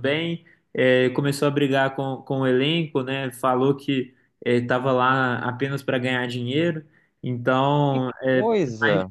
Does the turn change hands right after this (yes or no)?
no